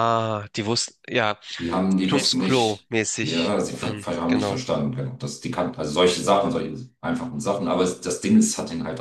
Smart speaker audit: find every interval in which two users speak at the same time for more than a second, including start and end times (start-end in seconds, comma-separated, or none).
2.1-4.6